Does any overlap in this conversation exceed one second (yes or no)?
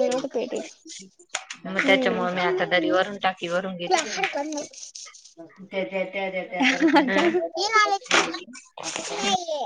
yes